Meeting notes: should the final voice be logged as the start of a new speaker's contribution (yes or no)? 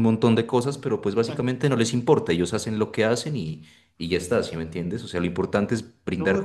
yes